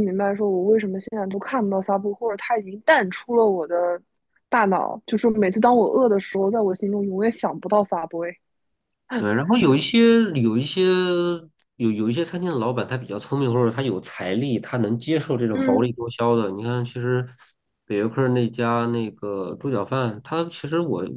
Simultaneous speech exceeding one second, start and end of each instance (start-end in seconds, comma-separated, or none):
none